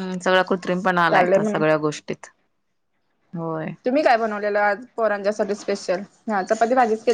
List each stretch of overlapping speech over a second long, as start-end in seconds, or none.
none